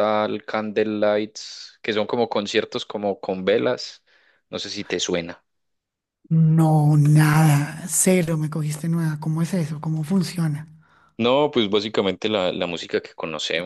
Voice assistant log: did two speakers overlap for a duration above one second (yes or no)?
no